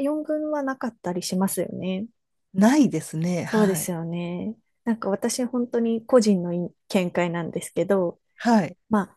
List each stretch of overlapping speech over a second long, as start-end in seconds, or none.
none